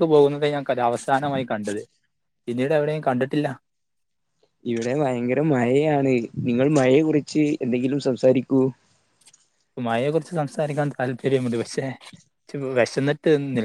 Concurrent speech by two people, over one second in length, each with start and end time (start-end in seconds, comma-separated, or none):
none